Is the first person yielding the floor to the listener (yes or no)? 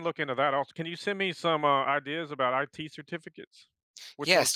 yes